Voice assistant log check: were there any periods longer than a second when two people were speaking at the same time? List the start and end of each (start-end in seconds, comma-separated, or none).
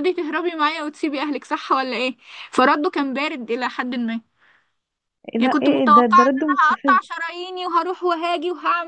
5.4-7.0